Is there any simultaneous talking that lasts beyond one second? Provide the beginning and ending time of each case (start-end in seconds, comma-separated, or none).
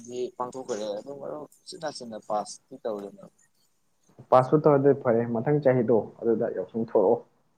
none